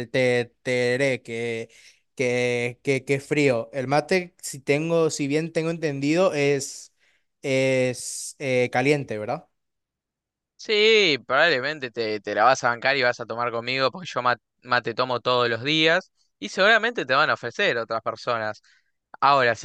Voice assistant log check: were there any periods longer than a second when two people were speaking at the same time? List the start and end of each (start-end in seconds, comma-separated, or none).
none